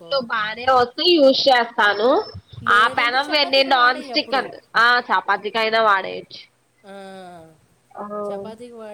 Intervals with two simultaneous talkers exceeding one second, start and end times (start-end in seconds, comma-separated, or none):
2.8-4.4